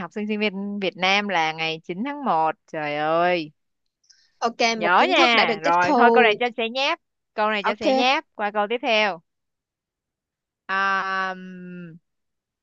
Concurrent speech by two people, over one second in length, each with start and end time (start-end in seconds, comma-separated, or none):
4.8-6.4